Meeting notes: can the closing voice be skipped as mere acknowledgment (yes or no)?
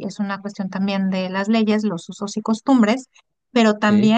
yes